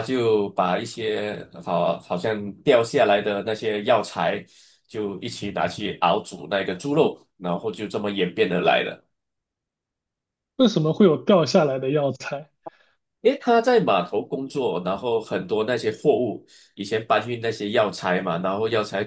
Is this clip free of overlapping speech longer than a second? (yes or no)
yes